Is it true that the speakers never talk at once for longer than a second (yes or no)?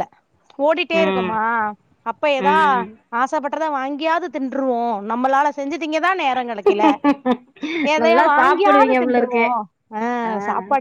no